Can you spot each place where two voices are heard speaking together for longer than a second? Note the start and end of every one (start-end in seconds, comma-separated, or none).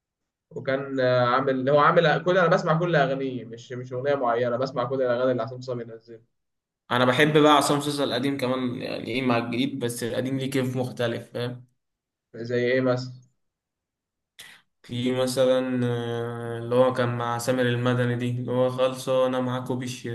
none